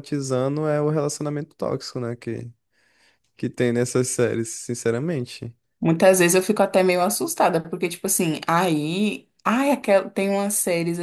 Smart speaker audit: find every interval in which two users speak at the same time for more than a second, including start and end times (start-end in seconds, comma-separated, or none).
none